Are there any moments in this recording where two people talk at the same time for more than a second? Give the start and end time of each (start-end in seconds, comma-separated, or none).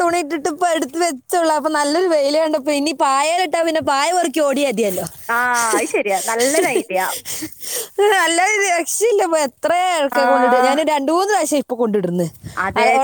none